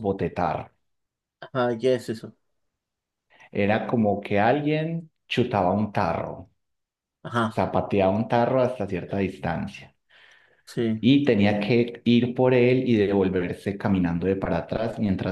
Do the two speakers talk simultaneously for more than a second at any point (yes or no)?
no